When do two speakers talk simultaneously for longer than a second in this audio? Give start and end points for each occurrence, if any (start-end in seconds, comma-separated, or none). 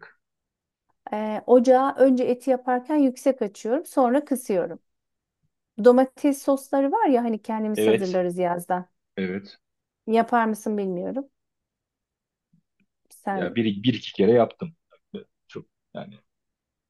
none